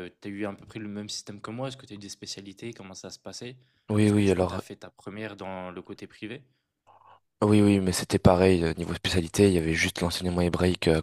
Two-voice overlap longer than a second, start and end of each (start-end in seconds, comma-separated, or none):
none